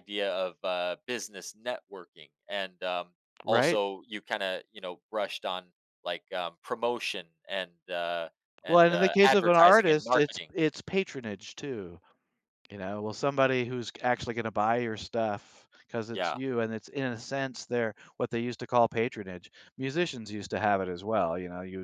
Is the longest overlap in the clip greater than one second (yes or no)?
yes